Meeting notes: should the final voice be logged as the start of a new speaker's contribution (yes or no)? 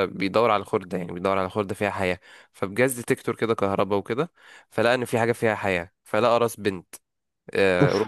no